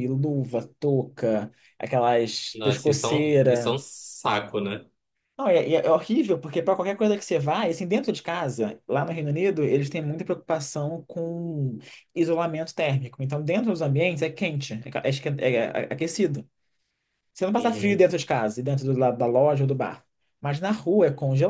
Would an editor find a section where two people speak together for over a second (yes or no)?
yes